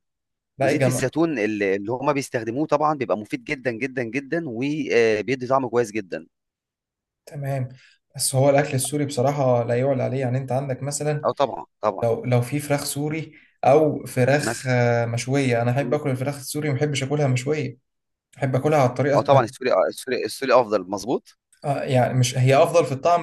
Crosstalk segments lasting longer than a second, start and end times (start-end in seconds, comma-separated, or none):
none